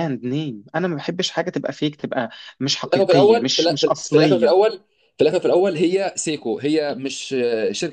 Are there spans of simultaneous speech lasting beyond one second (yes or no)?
yes